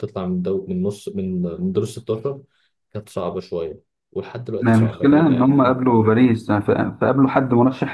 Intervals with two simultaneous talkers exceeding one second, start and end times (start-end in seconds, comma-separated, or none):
4.6-5.8